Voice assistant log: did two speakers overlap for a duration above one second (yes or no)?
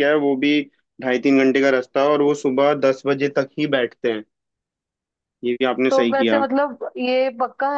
no